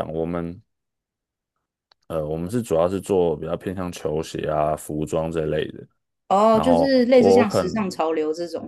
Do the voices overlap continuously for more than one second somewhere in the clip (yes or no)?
yes